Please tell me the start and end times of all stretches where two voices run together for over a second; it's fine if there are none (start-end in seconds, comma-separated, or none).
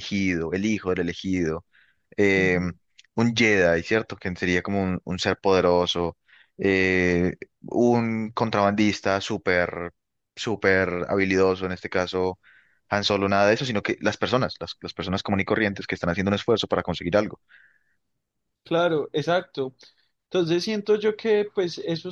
none